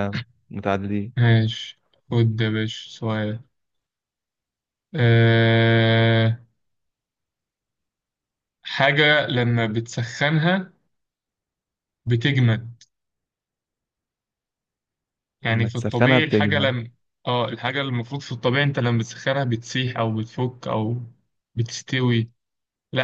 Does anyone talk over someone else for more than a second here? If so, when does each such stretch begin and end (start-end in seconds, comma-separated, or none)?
15.4-16.7